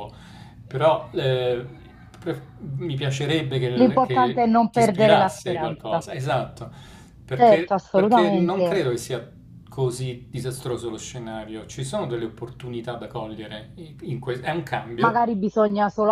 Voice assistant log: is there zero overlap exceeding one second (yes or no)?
no